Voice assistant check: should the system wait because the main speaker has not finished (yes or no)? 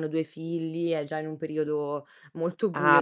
no